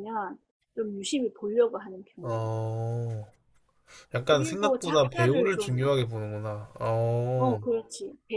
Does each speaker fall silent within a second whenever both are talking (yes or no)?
no